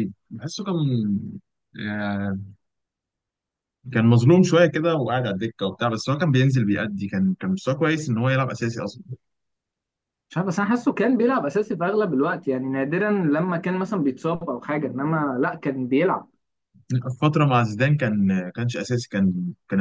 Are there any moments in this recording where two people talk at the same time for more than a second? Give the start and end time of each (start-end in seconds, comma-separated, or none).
none